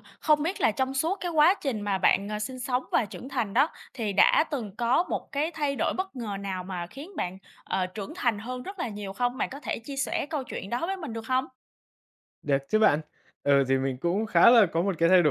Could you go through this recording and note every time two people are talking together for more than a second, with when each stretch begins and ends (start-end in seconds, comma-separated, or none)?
none